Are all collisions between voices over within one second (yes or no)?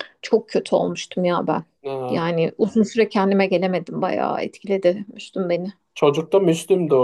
yes